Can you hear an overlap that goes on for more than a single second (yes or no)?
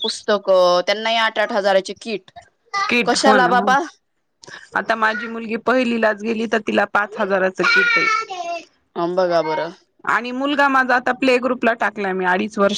no